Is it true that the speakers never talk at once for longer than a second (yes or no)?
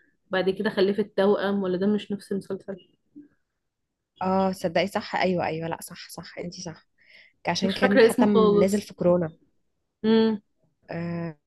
no